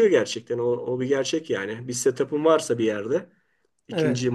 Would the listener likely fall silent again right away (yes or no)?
yes